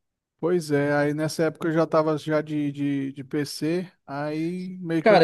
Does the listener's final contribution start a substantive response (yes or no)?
yes